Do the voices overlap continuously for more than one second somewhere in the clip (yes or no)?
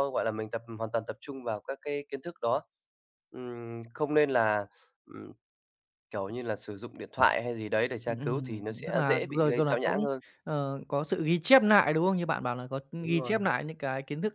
yes